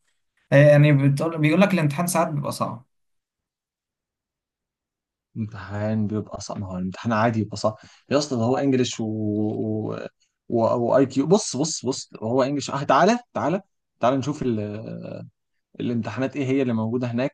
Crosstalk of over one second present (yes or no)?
no